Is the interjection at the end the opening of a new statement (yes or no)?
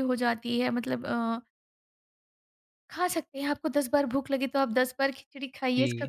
yes